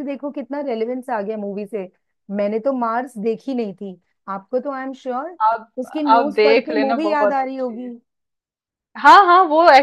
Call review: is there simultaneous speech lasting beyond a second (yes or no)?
yes